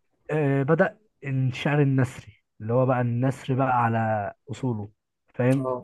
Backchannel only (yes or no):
yes